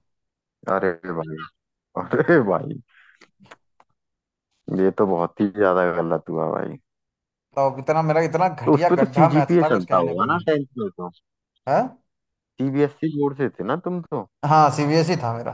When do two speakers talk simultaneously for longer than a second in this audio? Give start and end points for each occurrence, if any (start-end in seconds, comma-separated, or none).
8.7-10.4